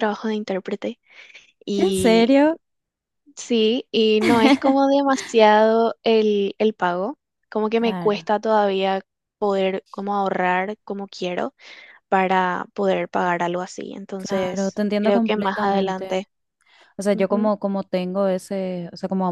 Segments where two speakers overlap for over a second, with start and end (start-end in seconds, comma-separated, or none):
14.2-16.1